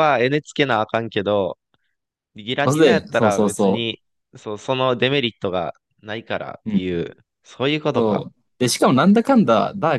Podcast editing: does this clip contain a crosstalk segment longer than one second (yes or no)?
yes